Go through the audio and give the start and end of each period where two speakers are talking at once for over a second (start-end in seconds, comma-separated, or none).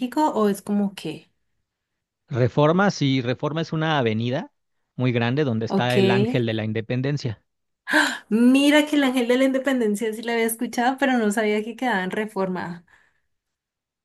none